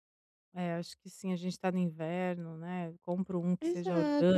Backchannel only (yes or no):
no